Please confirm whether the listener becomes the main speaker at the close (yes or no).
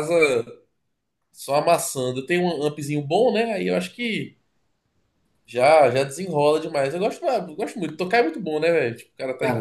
yes